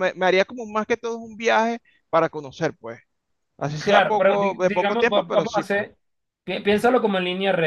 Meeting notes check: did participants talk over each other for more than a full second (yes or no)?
yes